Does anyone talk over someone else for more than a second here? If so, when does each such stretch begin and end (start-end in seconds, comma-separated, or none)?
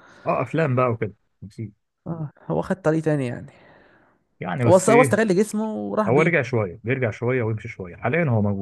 none